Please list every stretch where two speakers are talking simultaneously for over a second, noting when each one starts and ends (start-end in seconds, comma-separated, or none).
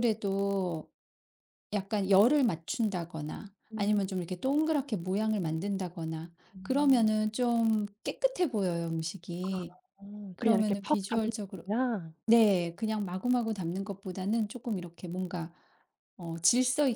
10.3-11.6